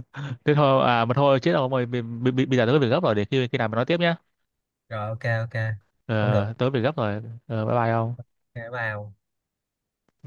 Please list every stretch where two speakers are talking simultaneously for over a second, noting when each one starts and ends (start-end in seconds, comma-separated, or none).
none